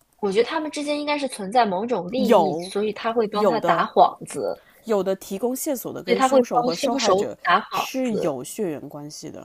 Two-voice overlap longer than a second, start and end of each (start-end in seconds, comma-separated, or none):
6.0-8.4